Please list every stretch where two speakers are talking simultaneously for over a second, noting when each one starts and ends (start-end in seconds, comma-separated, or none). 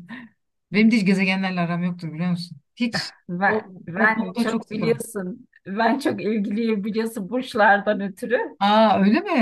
3.3-5.0